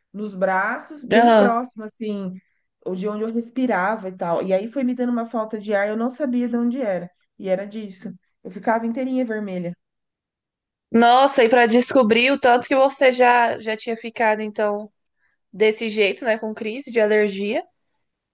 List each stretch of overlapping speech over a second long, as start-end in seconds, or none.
none